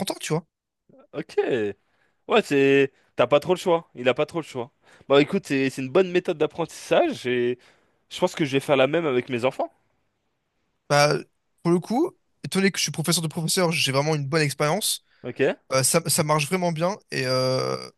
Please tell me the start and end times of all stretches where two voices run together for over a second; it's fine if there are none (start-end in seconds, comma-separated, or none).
none